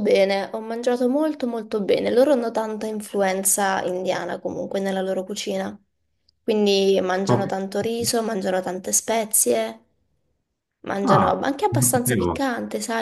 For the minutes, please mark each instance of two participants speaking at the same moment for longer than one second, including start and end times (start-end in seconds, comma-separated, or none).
11.0-12.4